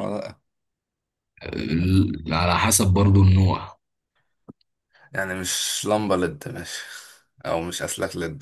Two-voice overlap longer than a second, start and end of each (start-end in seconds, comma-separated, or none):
none